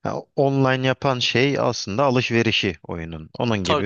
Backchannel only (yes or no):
no